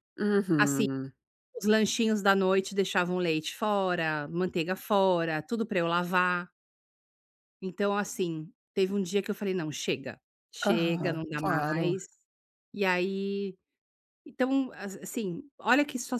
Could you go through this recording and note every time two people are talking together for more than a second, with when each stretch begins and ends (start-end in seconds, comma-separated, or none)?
10.7-11.9